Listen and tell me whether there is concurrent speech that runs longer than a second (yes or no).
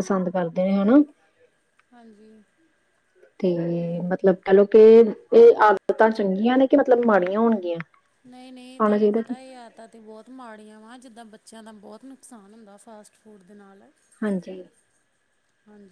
no